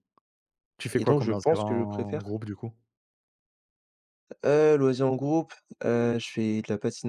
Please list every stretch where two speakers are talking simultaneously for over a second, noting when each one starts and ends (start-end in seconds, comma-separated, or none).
0.9-2.3